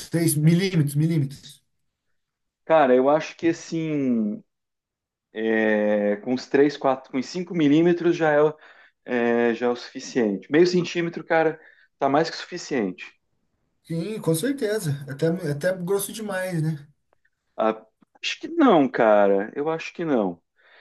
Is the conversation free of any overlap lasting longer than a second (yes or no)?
yes